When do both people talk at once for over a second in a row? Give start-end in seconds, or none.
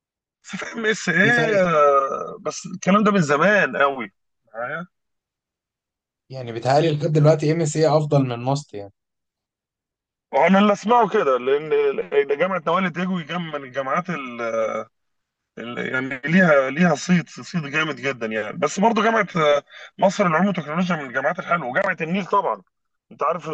none